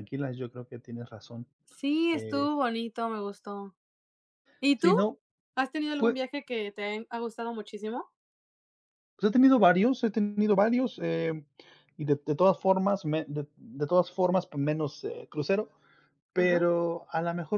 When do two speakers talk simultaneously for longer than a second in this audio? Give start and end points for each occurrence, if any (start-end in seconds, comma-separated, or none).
none